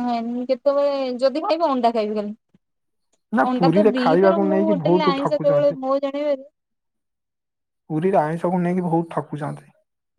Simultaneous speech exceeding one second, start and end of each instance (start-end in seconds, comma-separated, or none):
3.5-5.8